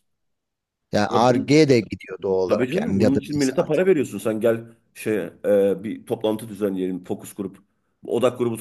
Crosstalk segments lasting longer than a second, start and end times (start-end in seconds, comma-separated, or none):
2.5-3.8